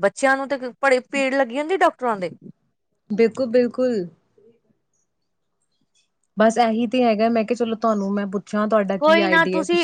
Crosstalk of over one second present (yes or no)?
no